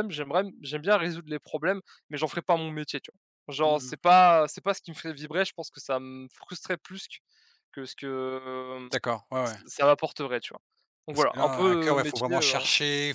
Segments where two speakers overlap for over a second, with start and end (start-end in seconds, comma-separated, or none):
11.1-12.6